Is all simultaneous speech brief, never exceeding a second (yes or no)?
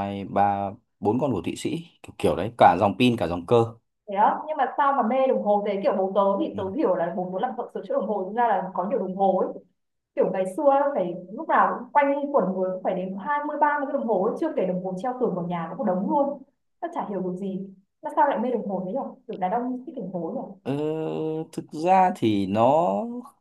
yes